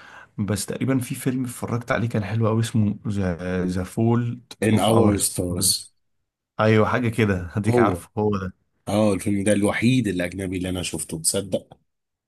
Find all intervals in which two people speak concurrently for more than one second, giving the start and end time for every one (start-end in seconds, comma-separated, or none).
4.6-5.9